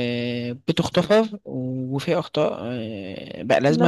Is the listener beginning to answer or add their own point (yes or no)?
no